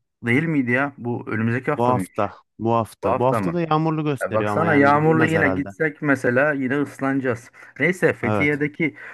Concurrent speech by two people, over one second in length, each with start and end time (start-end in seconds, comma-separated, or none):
4.2-5.7